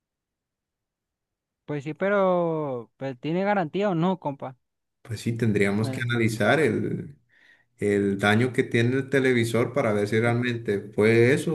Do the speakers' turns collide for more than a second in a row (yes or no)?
no